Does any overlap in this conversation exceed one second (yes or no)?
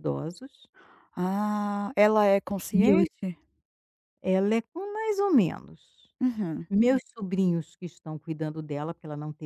no